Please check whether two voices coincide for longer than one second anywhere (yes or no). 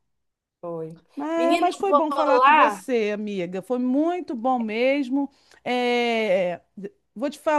yes